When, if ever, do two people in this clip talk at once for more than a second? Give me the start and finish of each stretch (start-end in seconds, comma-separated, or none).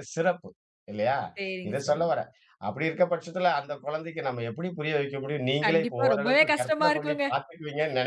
5.7-7.2